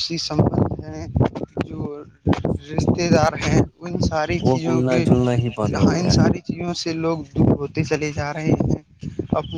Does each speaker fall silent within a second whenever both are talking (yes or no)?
no